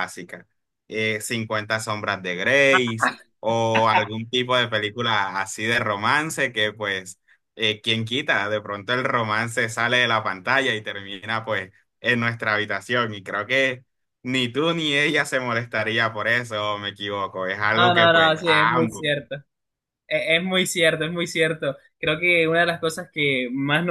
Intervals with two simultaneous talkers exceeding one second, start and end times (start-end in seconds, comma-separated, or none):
17.8-19.1